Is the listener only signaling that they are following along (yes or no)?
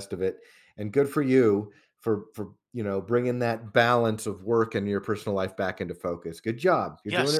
no